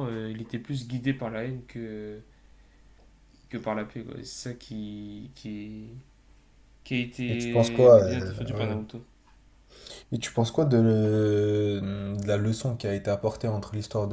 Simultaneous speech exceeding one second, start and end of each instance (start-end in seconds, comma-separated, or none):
7.3-8.8